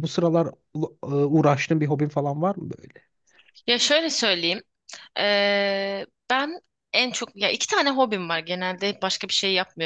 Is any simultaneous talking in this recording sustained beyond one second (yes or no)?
no